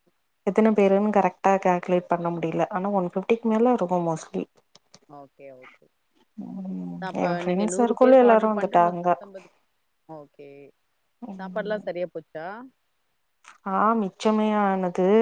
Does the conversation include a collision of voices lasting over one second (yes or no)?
yes